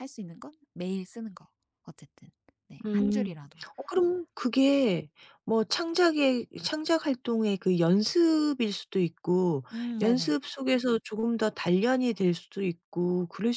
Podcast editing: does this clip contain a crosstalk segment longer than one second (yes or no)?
no